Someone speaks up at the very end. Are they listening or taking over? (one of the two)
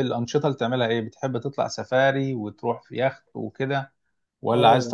taking over